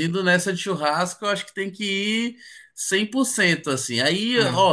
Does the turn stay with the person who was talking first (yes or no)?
yes